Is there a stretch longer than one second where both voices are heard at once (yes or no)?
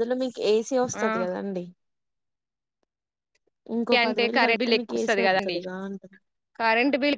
yes